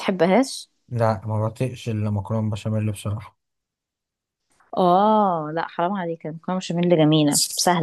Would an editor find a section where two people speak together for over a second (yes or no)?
no